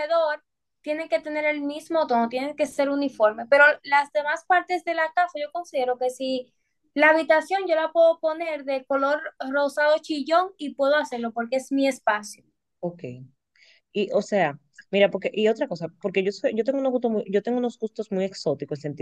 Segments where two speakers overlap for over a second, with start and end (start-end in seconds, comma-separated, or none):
none